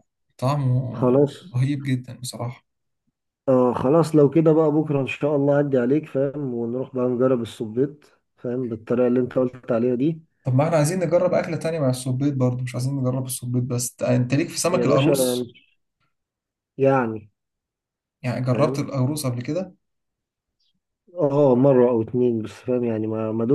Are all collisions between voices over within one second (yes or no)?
yes